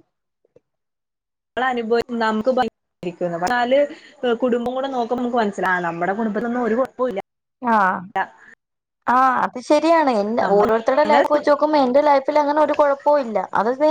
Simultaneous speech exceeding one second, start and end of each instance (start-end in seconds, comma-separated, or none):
none